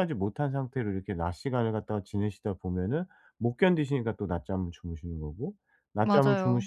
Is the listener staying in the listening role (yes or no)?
yes